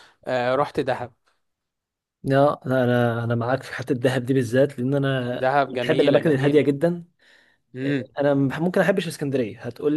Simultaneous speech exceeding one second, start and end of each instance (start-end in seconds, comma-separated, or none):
5.4-6.7